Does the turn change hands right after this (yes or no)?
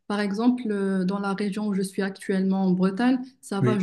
no